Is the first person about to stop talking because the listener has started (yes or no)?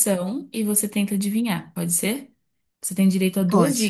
no